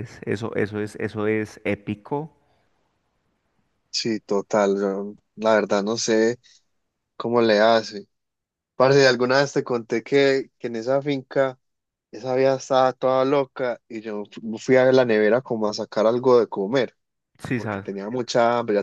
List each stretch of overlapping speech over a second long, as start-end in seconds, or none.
none